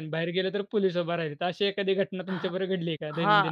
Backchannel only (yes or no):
no